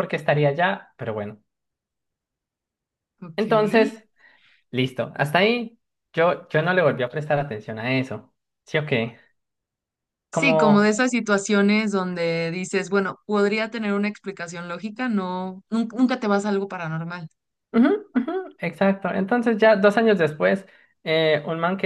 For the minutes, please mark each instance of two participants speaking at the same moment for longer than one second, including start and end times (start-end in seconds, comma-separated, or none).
none